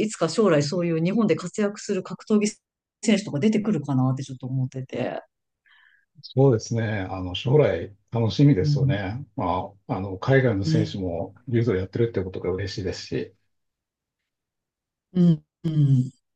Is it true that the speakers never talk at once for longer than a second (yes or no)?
yes